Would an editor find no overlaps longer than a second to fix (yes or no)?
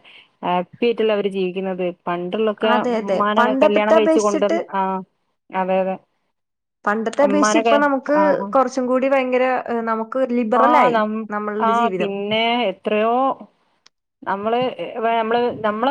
no